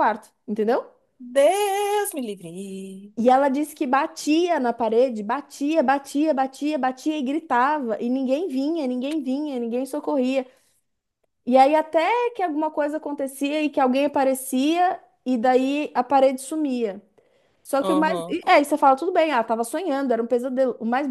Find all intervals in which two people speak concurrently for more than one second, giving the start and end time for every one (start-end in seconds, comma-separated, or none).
none